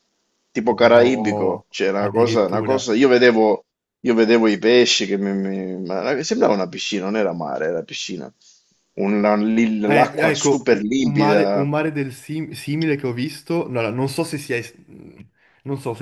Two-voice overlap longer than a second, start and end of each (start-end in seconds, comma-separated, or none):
0.8-2.9, 9.9-11.5